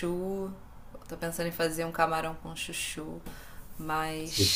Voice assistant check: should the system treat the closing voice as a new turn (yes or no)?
no